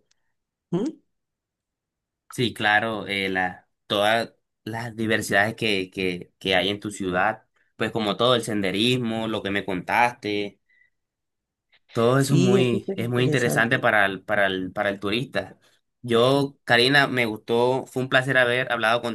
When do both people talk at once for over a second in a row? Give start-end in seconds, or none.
12.2-13.9